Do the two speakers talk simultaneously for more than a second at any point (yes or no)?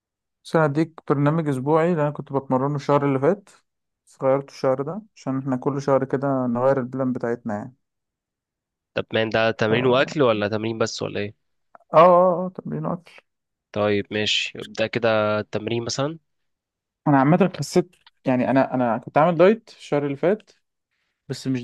no